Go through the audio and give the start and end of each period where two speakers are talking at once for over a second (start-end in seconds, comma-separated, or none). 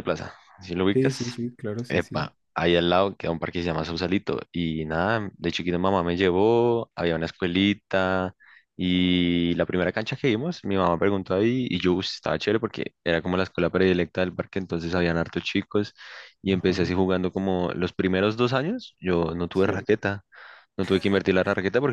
none